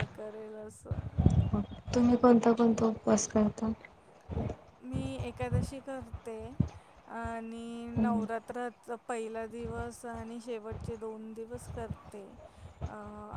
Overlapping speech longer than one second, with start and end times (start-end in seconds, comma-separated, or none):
none